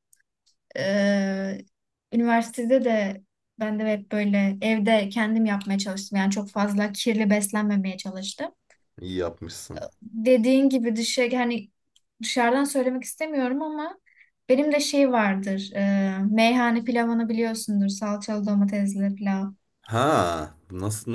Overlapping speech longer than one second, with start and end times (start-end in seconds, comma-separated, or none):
none